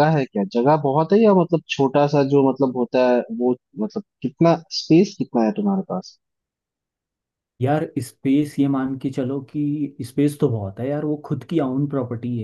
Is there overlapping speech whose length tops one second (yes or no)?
no